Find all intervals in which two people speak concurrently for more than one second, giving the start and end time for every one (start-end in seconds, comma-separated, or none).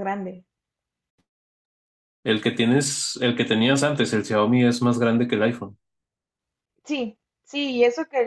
none